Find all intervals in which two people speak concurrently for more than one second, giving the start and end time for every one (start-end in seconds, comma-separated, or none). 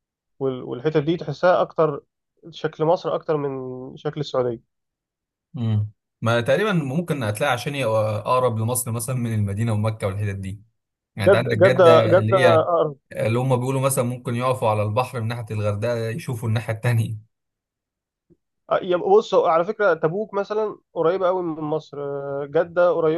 11.2-12.7